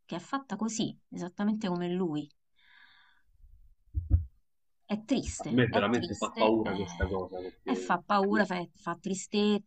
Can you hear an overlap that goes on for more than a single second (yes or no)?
yes